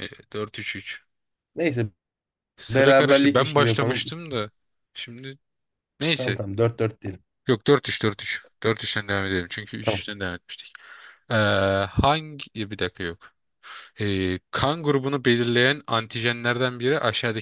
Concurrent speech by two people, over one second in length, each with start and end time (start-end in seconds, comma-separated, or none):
2.7-4.2